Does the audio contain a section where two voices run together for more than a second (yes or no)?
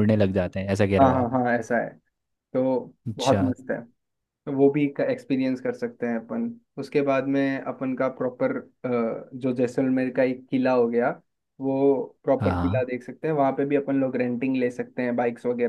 no